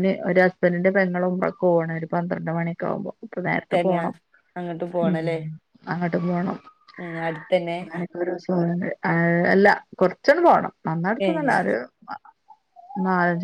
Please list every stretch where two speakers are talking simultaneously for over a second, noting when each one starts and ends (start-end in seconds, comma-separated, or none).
none